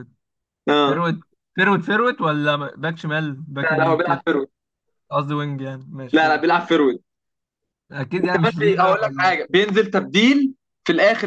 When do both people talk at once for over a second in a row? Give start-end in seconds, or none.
8.2-9.4